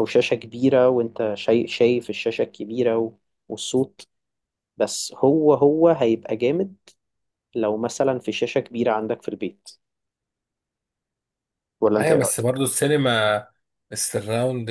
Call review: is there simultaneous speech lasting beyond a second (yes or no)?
no